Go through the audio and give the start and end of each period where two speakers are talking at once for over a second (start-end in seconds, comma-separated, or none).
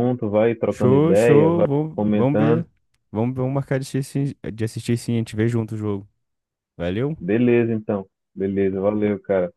0.7-2.6